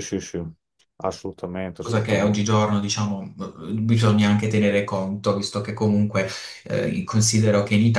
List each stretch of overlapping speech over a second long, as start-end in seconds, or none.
none